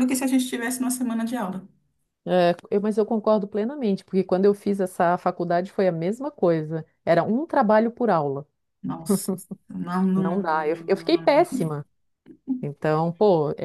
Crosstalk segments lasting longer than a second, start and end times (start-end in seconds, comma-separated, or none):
10.2-11.5